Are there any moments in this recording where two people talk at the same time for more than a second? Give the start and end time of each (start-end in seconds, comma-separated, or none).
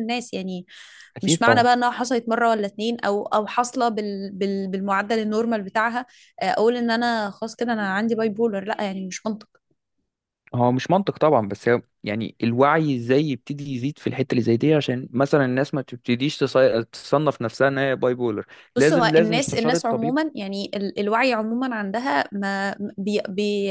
18.8-20.2